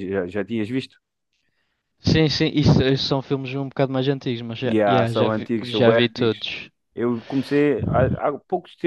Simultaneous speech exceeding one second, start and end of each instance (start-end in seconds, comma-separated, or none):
4.7-6.5